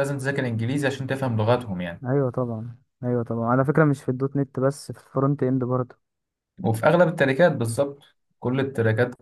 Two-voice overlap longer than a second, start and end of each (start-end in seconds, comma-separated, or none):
none